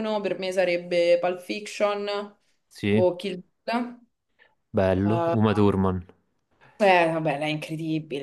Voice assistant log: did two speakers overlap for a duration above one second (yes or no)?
no